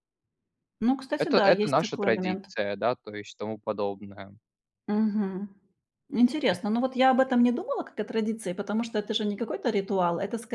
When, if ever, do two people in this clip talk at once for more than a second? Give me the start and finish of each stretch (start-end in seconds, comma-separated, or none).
1.2-2.5